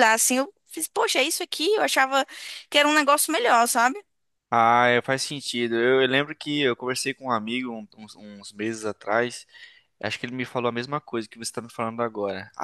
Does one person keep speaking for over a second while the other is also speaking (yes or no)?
no